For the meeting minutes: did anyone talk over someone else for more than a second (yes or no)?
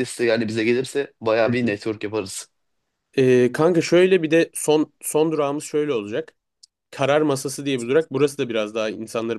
no